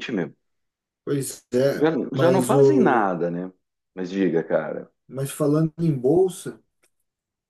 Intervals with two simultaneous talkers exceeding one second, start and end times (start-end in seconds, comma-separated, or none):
1.8-3.1